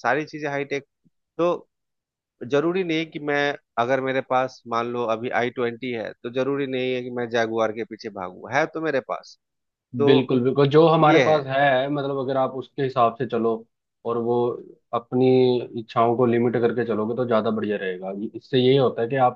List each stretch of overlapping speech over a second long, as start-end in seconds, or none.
none